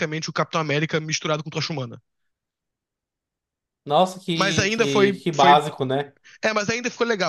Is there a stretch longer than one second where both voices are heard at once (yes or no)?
yes